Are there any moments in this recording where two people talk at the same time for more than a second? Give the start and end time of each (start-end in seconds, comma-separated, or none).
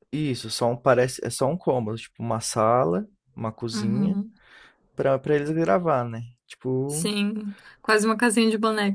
none